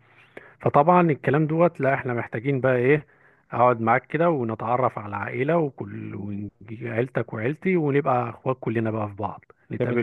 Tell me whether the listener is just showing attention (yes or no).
no